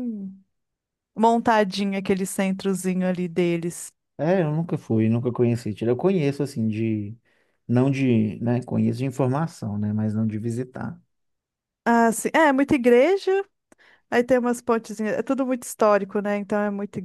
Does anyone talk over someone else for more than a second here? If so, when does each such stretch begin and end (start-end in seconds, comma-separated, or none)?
none